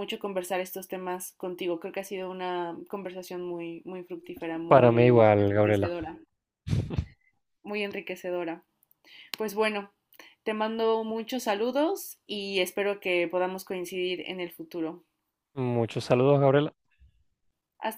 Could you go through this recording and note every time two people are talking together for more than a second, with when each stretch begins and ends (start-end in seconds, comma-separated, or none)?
4.7-5.9